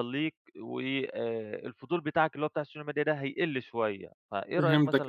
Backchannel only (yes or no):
no